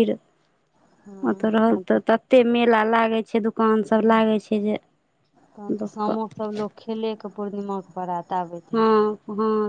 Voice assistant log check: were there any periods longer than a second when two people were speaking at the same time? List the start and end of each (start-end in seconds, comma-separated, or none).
none